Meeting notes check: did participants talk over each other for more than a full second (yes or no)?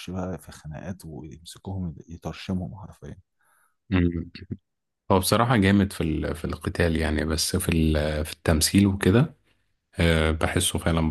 no